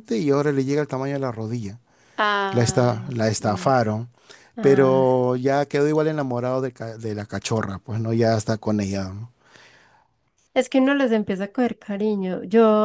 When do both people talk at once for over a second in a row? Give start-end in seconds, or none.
2.5-3.7